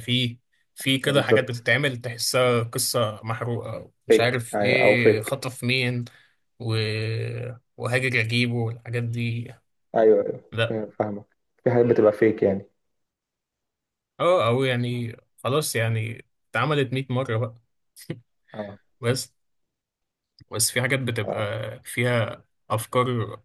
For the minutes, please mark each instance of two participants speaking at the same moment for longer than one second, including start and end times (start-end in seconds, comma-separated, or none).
4.1-5.5